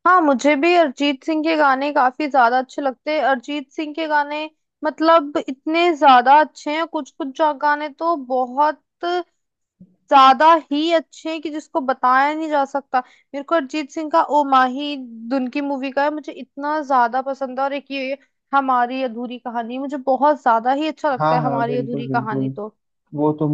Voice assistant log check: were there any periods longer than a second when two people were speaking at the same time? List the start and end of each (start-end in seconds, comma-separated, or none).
21.2-22.4